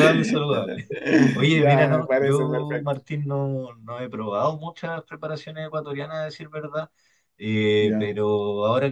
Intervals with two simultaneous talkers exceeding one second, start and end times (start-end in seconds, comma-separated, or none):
1.5-3.0